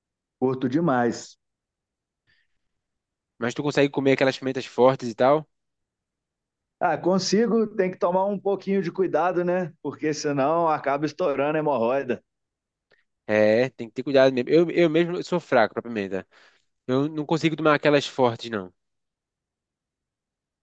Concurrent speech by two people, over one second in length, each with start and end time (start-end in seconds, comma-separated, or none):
none